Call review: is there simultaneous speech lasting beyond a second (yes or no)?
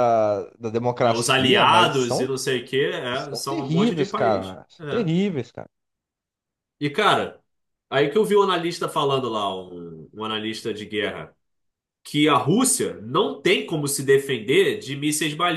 yes